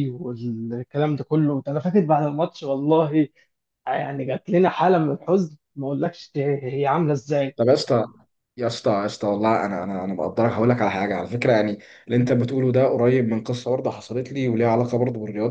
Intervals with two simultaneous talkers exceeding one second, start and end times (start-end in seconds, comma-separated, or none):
none